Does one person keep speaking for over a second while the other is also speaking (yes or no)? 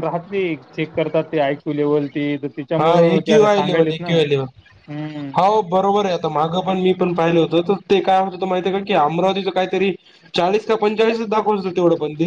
yes